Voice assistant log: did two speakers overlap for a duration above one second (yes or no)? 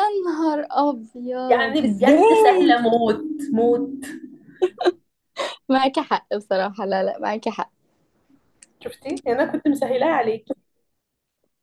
yes